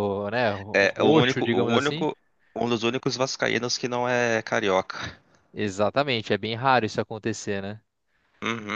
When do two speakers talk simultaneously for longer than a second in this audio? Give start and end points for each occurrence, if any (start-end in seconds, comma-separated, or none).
0.7-2.1